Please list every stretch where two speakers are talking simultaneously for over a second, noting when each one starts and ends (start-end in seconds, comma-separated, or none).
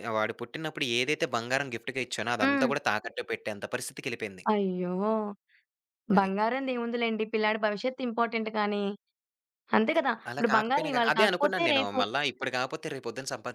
10.3-12.0